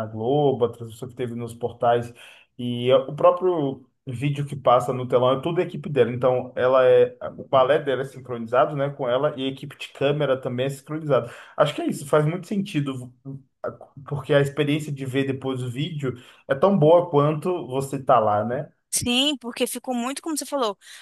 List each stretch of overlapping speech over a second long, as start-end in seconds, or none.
none